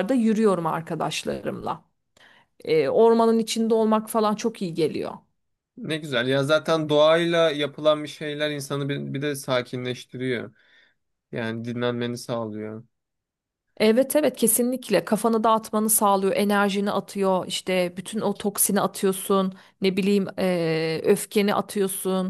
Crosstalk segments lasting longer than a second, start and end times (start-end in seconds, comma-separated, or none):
none